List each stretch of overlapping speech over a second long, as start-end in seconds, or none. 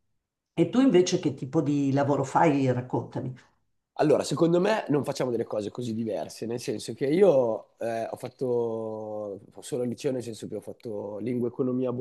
none